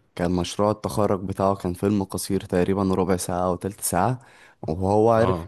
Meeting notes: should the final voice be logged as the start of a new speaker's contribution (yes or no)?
no